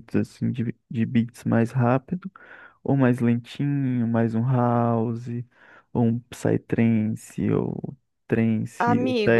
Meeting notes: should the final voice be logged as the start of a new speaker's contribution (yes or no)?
yes